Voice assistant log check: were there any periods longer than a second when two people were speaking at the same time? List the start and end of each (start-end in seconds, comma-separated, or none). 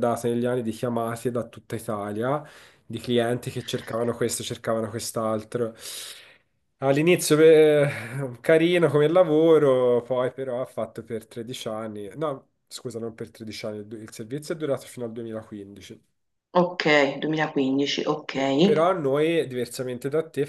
none